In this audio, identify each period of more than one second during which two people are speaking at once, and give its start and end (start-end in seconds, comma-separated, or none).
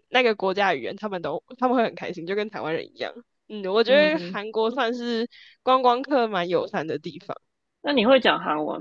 none